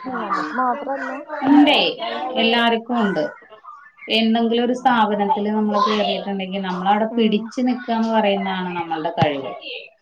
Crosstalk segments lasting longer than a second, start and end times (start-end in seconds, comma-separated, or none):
none